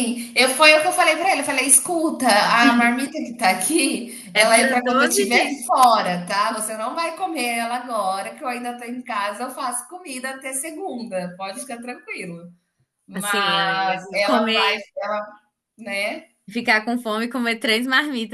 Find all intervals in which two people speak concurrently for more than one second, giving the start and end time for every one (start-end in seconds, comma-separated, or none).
4.3-5.7, 13.1-14.9